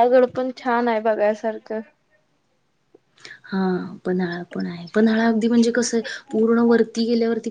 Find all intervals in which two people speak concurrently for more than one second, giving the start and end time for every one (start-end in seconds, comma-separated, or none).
none